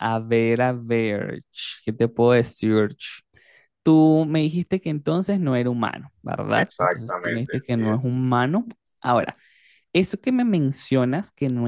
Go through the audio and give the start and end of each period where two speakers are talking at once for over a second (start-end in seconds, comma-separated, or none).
6.5-8.2